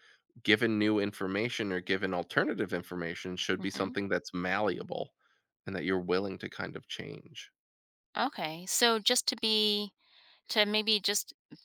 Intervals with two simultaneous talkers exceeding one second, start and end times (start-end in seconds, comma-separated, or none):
none